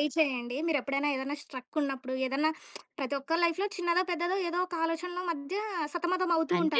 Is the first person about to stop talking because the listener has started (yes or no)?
yes